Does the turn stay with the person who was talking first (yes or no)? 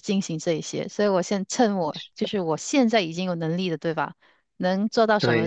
yes